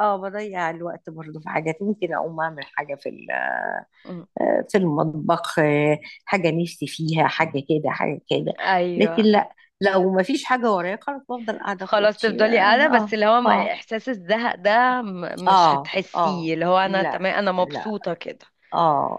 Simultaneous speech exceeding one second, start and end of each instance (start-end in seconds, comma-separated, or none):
11.8-13.7, 15.5-17.9